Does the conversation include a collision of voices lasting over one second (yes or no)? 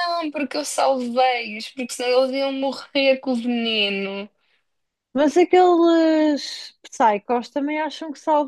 no